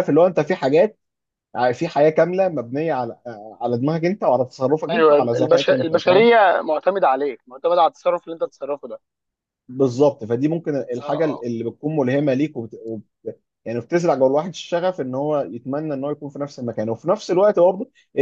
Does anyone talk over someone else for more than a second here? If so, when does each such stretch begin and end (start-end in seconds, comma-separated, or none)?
4.9-6.3